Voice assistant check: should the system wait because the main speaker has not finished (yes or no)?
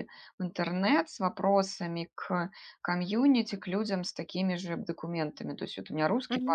yes